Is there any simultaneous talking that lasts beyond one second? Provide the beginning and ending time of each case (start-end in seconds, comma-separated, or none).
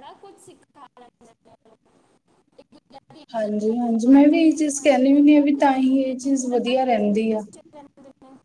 3.3-7.4